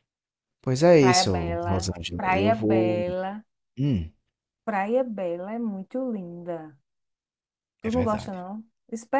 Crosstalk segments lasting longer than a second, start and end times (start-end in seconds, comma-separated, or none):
1.0-3.0